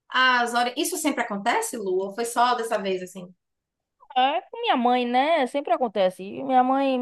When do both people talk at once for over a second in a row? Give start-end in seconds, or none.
none